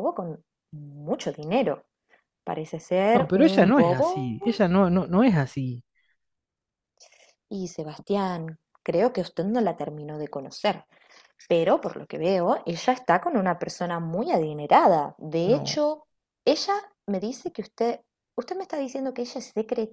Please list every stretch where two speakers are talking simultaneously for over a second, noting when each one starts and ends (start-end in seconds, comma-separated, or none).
3.1-4.6